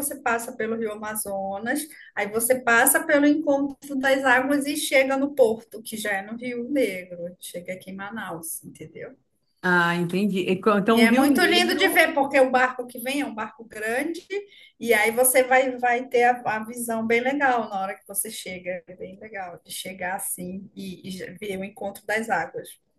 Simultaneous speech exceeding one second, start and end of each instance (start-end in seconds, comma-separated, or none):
10.9-12.1